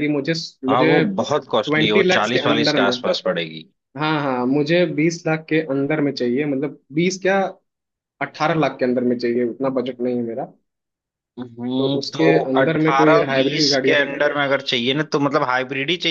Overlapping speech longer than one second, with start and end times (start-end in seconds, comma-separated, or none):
0.7-2.9, 11.8-14.0